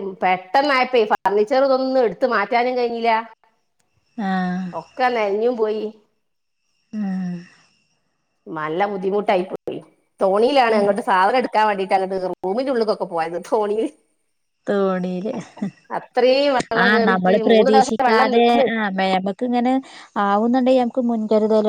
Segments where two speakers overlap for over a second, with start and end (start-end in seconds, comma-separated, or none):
16.8-18.7